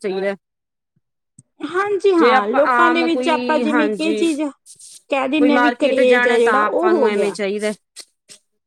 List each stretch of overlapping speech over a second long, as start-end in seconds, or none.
2.2-4.2, 5.4-7.3